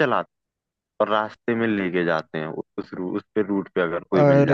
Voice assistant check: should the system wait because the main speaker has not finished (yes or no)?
no